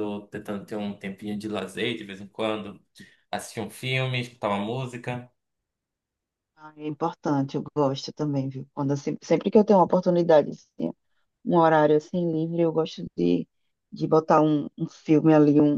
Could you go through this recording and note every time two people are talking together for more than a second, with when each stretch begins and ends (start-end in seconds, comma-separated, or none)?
none